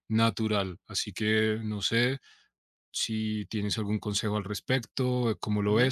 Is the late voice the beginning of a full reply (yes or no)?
yes